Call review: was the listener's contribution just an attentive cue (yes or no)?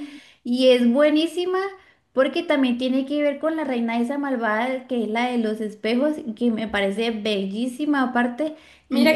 no